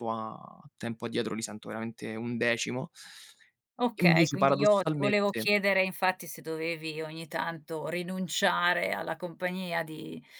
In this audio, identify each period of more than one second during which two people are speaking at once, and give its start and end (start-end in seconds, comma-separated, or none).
4.0-5.5